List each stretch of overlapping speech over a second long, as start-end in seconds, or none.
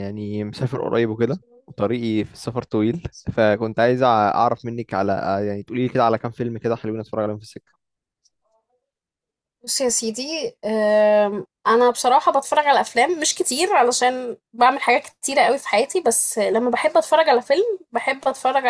none